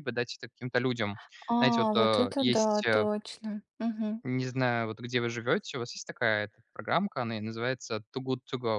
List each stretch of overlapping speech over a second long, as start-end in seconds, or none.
1.6-3.1